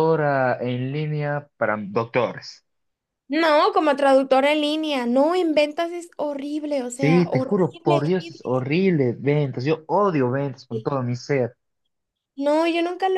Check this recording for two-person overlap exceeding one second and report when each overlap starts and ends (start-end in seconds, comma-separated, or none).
6.9-8.7